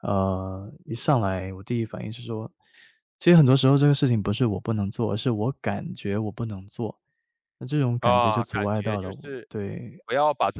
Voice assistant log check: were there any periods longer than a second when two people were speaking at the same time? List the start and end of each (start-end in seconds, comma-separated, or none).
8.0-9.5